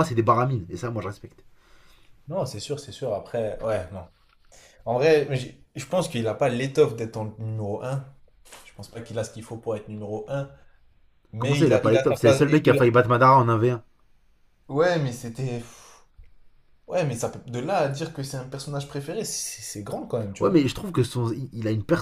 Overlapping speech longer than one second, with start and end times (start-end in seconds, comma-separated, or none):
11.4-12.8